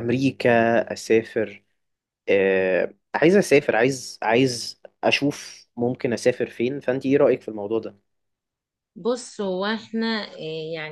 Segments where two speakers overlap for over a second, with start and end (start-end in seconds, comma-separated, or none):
none